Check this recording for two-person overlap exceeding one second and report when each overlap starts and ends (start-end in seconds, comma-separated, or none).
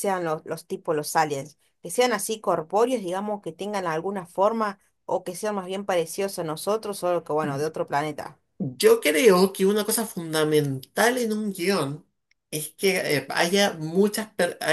none